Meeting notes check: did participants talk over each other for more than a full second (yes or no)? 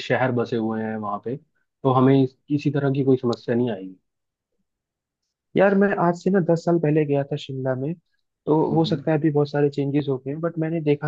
no